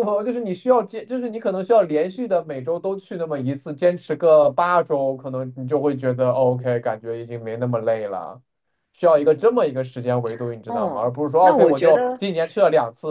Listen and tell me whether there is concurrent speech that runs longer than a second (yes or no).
yes